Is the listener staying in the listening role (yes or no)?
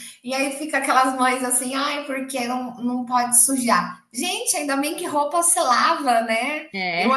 yes